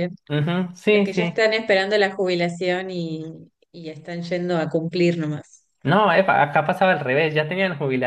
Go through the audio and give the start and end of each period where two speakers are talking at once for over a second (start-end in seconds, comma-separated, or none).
none